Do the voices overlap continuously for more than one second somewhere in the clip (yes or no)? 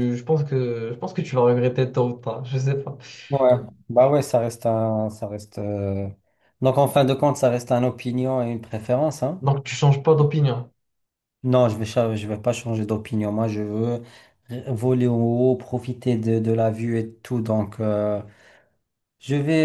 no